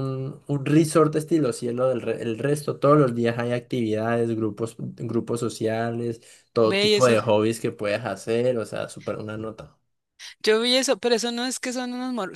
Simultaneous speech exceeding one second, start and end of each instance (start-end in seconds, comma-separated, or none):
none